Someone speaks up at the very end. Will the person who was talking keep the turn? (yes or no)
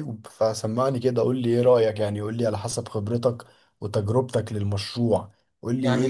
yes